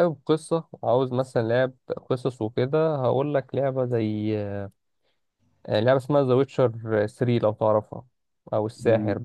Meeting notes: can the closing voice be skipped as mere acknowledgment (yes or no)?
no